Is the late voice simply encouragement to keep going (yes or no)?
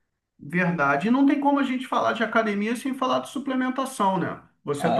no